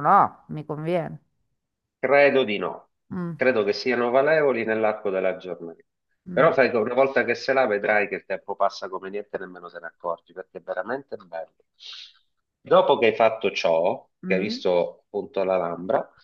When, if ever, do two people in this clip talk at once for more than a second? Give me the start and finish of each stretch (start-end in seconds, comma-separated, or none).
none